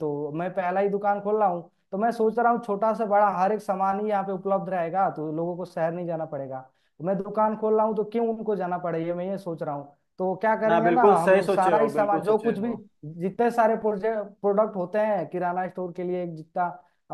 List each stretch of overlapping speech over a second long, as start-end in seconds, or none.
10.7-12.7